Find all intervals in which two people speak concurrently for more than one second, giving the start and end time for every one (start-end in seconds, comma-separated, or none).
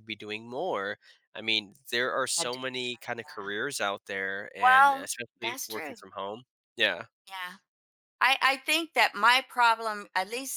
4.6-6.0